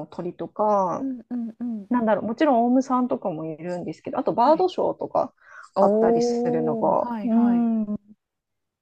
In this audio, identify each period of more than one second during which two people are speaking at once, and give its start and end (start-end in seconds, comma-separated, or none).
5.8-7.7